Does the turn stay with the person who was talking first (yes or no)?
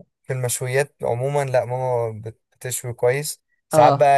yes